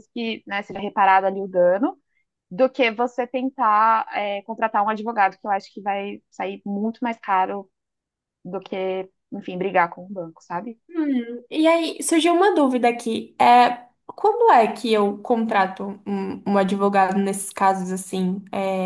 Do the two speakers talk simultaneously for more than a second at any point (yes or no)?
no